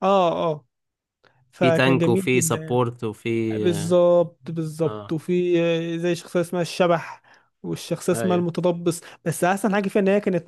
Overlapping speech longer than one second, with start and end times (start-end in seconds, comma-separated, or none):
1.6-2.8